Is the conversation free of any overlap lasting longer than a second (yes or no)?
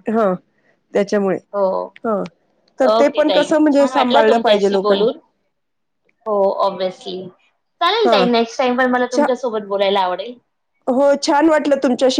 no